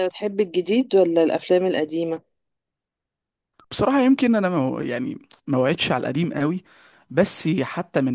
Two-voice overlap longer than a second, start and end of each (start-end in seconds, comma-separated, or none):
none